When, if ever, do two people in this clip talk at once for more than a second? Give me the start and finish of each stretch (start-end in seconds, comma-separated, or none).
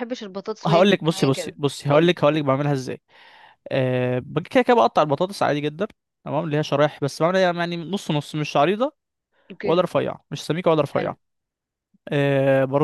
0.7-2.1